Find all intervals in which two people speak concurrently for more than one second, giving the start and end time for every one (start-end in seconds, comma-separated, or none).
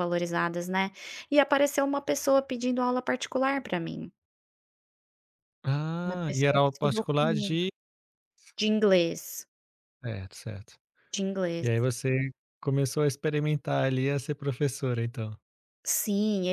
6.0-7.6